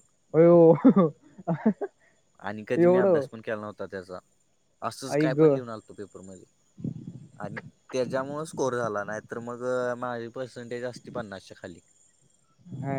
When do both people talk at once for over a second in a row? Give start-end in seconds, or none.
none